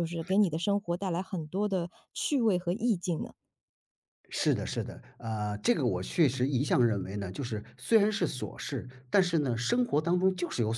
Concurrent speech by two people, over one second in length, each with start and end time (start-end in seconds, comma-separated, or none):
none